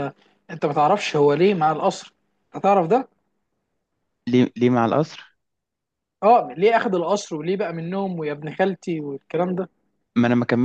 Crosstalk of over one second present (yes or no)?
no